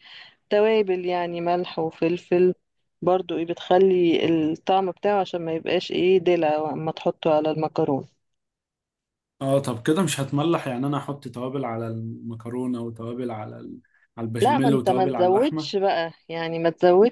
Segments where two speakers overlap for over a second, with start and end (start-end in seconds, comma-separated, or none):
14.4-15.7